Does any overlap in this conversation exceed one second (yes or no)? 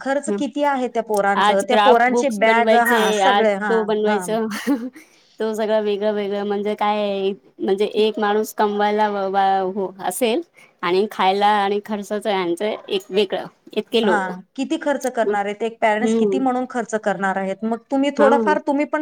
yes